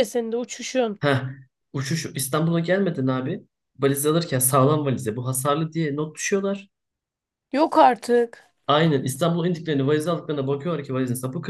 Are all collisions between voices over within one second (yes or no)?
yes